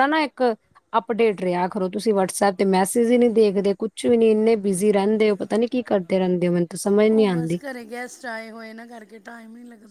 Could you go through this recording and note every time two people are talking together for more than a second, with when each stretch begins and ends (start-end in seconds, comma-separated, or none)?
none